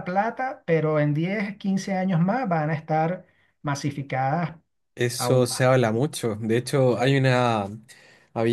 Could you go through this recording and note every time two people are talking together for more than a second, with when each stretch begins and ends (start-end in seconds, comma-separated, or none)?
none